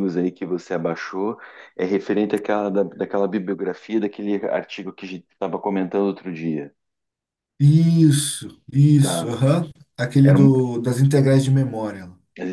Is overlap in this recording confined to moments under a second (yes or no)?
yes